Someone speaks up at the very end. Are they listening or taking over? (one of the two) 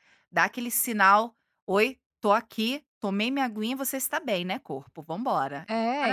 taking over